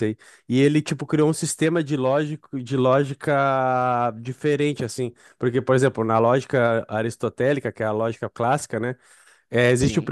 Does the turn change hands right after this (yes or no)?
no